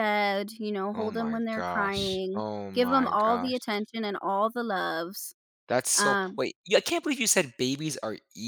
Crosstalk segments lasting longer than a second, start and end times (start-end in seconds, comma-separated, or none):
0.9-3.6